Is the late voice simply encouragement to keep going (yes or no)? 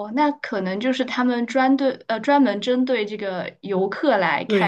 no